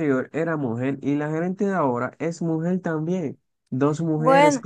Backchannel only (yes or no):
yes